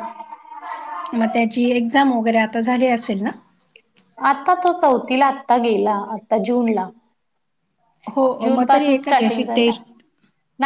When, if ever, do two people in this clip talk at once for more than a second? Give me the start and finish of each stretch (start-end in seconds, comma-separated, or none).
8.4-9.7